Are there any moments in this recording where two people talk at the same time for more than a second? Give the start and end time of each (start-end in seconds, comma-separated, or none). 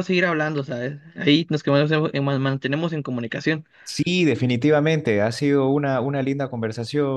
none